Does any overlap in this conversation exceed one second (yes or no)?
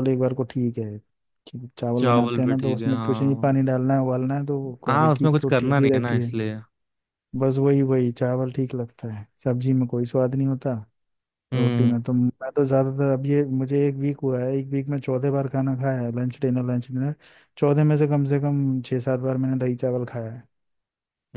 yes